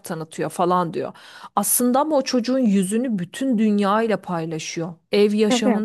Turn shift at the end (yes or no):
no